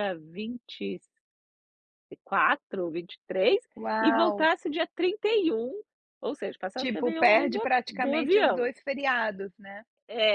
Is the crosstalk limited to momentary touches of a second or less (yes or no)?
no